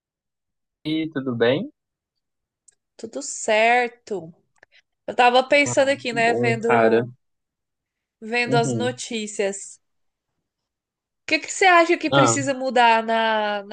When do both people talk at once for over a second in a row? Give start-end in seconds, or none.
5.7-7.0